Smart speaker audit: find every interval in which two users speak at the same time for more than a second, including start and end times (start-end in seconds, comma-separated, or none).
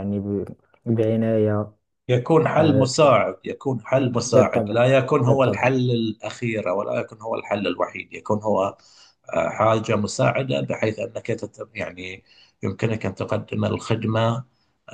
4.2-5.7